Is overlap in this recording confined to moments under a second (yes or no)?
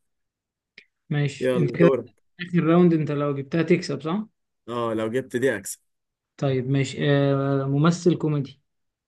yes